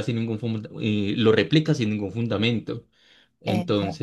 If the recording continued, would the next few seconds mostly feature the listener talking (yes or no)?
no